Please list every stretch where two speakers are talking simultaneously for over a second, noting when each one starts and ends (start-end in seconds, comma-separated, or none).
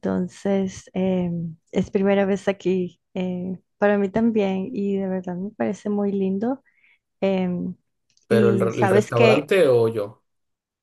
8.3-9.5